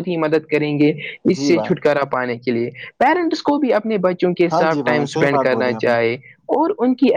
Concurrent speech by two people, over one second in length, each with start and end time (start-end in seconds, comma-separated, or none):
none